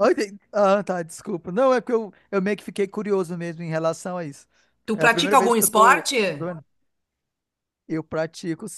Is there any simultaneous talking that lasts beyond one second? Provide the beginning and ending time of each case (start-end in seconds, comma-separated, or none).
4.9-6.5